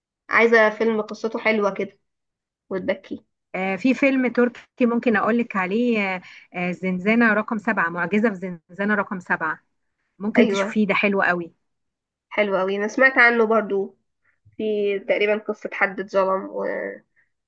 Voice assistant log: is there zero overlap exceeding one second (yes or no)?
yes